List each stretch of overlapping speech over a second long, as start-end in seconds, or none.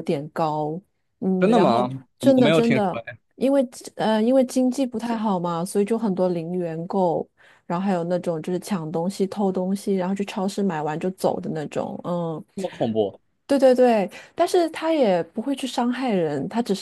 1.4-3.0